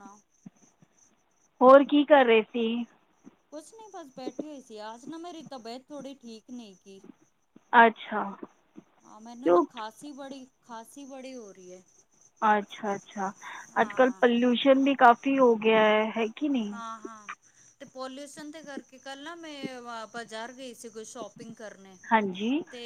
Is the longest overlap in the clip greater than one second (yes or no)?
no